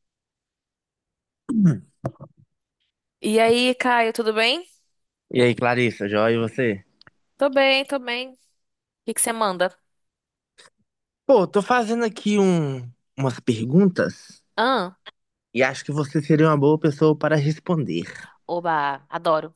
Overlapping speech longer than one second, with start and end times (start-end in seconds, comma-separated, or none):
none